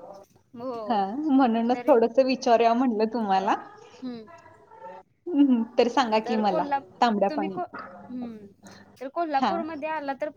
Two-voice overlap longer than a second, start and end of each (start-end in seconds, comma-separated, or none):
none